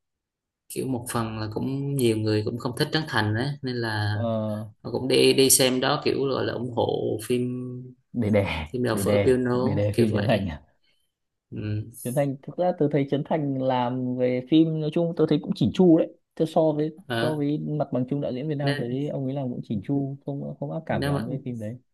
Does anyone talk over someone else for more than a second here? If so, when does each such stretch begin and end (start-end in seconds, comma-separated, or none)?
8.7-10.5